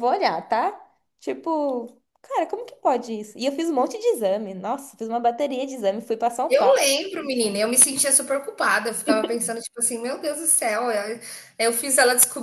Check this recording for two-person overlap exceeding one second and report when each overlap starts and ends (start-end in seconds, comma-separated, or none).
none